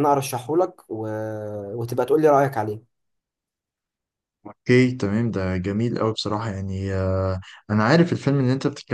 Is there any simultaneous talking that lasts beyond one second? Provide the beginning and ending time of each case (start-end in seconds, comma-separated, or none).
none